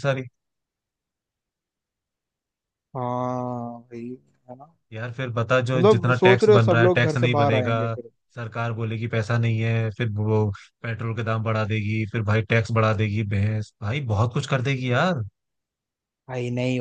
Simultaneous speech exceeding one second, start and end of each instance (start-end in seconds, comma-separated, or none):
5.8-7.8